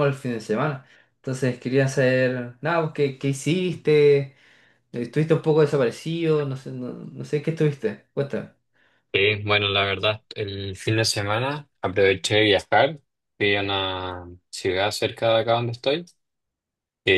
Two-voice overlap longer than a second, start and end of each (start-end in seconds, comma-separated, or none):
none